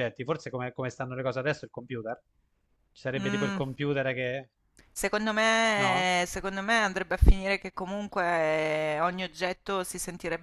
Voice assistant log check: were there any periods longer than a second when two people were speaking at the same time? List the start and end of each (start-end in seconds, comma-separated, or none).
none